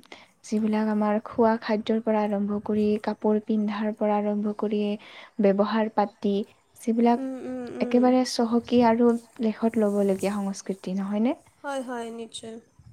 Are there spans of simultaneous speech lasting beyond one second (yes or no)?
no